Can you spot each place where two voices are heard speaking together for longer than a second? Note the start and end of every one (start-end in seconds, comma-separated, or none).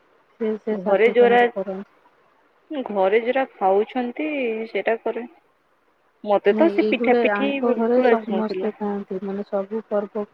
6.6-8.8